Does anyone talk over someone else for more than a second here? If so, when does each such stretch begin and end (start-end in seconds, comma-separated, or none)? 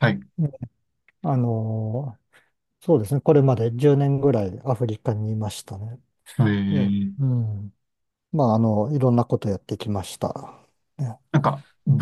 none